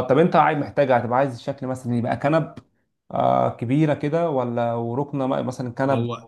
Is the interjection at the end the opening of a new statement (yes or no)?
yes